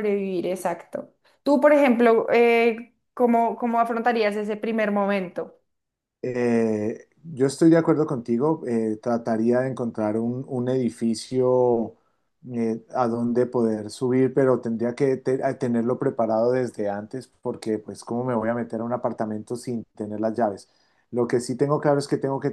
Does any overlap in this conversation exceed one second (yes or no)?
no